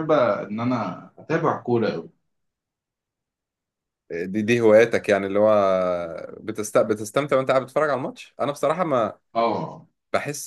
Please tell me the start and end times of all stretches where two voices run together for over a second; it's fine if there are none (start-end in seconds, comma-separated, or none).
none